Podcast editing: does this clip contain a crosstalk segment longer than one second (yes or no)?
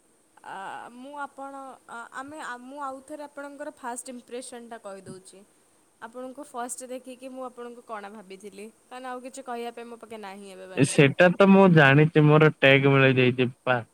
no